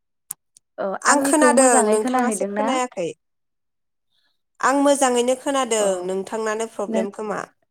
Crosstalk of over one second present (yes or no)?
yes